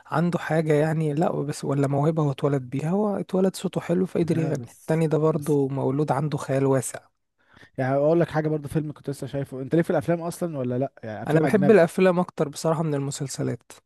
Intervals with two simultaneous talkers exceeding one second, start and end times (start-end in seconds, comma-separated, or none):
4.2-5.6